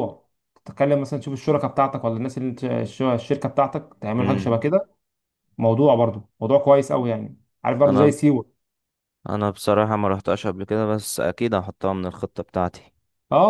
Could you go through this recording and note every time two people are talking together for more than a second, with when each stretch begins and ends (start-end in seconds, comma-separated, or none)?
none